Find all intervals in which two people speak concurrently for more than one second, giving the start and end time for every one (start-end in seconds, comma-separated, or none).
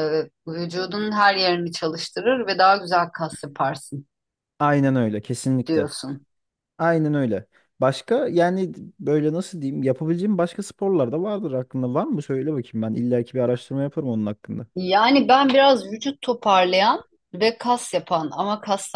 none